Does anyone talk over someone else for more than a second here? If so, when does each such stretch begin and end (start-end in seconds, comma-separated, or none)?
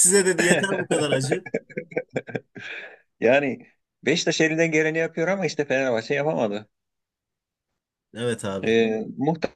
none